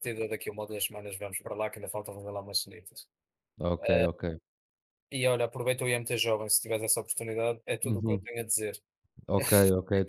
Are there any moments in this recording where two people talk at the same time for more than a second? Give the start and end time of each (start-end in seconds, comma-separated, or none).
none